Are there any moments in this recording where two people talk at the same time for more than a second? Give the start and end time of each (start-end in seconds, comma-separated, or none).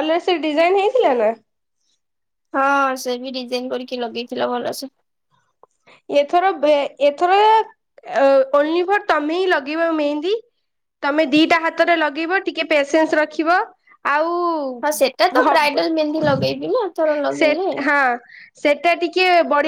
none